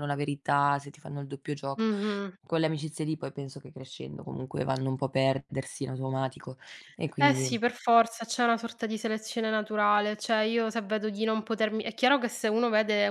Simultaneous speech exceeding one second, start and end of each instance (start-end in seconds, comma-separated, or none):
none